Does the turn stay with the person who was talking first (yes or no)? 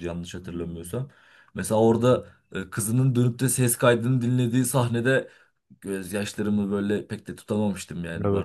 no